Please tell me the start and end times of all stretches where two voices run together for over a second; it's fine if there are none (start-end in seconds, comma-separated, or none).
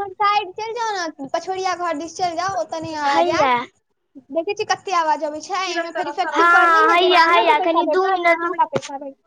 6.3-8.7